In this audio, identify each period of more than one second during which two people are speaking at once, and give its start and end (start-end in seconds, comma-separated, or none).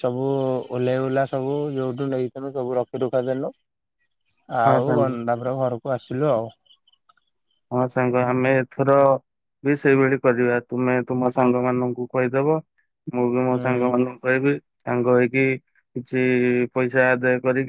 none